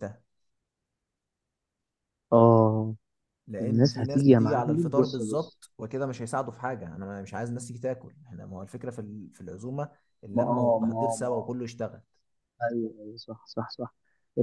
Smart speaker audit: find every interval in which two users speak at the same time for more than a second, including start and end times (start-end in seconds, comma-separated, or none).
3.6-5.6, 10.3-11.5